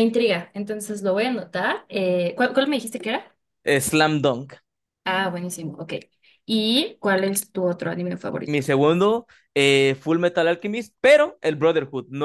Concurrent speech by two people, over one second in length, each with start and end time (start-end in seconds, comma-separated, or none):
none